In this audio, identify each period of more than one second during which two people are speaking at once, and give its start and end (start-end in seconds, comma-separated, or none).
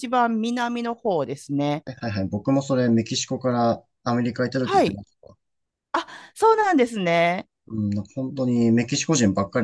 none